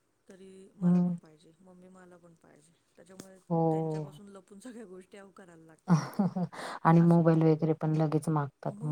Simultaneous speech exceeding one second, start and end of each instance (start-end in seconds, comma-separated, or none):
none